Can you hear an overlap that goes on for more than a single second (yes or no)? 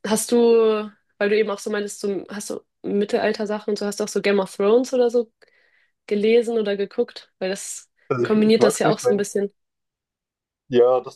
yes